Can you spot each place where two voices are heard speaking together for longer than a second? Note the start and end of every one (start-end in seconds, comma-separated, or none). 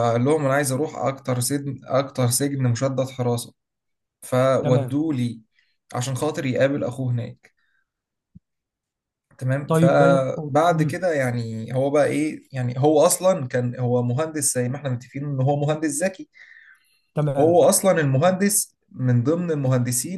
9.7-11.0